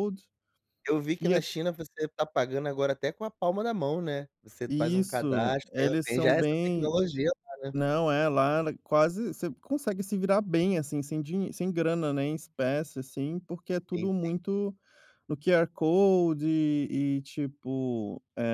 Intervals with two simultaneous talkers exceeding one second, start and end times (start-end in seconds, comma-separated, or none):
4.7-6.9